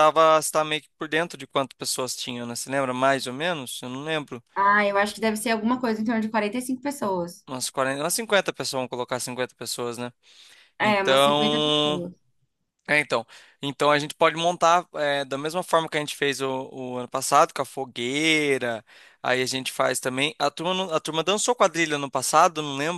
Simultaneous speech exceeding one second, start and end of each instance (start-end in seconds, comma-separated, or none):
10.8-12.1